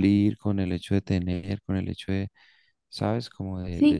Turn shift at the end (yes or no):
yes